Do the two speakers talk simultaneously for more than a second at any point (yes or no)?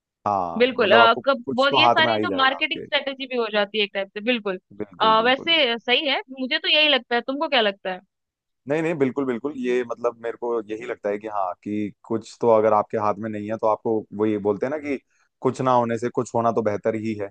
yes